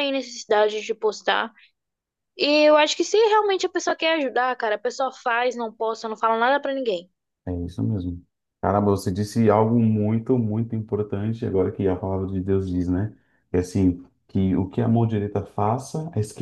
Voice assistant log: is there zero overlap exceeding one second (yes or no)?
yes